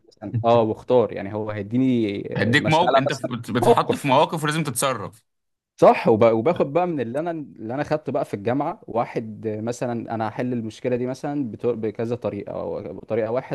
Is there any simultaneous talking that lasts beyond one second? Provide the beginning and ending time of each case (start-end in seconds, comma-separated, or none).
2.4-4.1